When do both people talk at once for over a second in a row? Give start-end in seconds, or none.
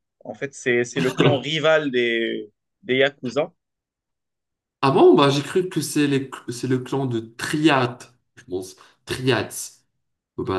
none